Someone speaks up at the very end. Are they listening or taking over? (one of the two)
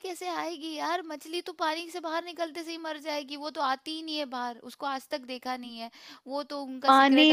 taking over